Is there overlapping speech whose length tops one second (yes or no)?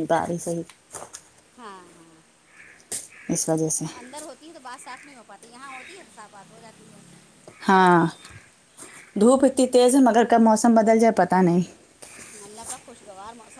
no